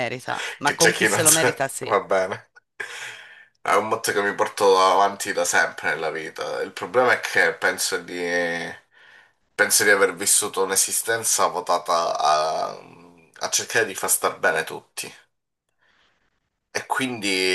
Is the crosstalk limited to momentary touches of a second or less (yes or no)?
no